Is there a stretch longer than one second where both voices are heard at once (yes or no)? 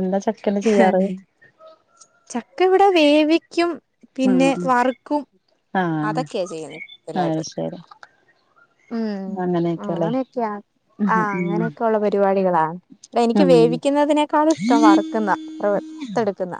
yes